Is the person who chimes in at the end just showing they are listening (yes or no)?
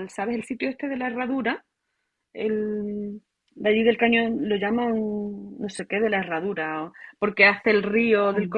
yes